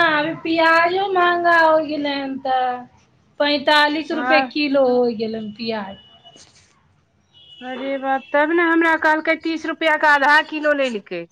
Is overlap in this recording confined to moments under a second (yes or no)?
yes